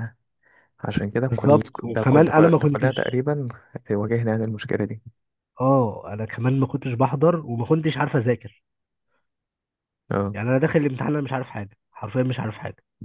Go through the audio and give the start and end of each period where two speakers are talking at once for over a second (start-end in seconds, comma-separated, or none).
1.2-3.2